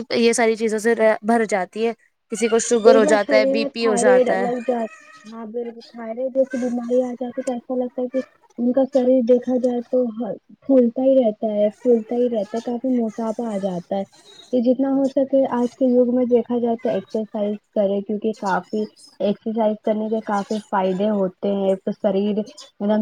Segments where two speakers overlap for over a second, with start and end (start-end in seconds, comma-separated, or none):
2.8-4.5